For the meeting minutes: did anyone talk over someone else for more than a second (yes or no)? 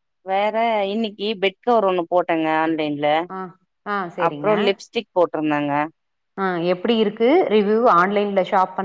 no